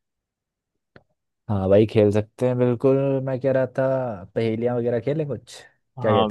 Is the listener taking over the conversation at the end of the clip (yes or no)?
yes